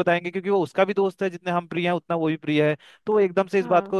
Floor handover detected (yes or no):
no